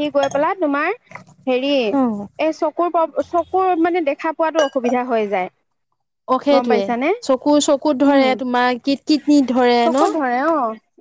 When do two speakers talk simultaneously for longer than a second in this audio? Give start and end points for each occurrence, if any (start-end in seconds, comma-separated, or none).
none